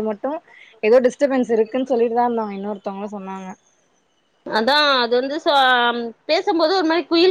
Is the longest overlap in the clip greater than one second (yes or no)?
no